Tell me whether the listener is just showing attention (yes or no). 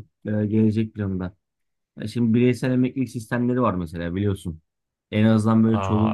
yes